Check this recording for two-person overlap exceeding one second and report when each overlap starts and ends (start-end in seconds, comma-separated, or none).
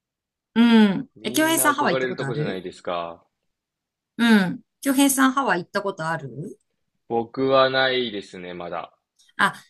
1.2-2.6